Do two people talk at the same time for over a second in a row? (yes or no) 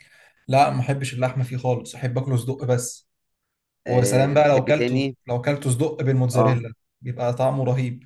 yes